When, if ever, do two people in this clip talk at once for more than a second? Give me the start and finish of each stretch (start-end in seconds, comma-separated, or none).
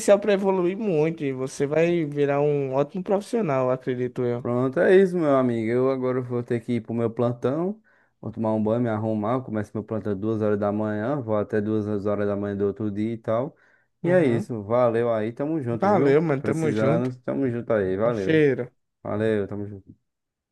15.7-17.1